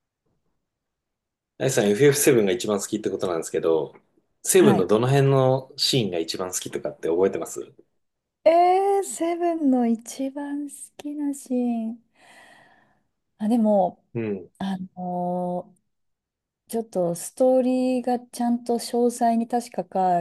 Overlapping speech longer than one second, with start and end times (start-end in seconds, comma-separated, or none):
none